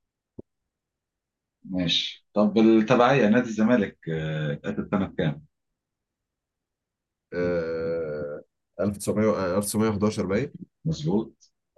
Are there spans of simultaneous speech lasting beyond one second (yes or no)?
no